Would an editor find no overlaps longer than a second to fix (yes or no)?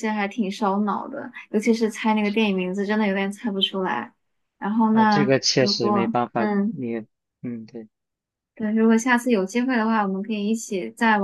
no